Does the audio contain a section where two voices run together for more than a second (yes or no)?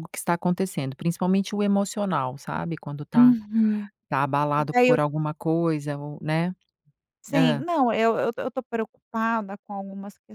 no